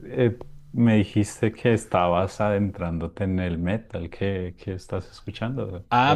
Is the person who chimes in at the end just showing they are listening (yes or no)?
no